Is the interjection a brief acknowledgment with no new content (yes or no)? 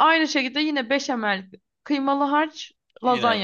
yes